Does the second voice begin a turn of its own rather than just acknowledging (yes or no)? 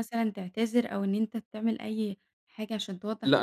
yes